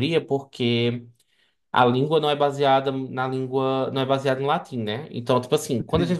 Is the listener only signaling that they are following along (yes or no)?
yes